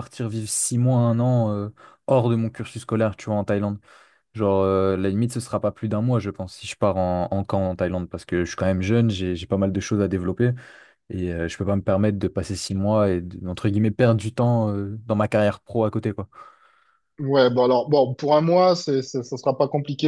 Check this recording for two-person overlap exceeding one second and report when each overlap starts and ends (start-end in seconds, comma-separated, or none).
none